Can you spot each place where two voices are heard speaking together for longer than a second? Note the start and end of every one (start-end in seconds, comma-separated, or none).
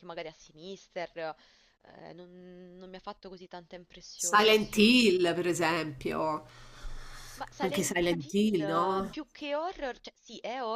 7.6-9.1